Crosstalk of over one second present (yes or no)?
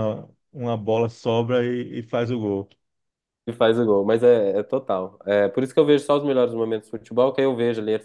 no